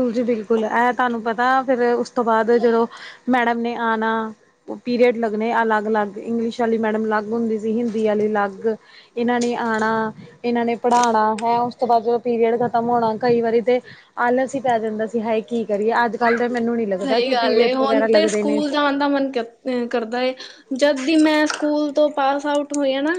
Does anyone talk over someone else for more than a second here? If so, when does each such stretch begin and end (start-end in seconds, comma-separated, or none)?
17.0-18.6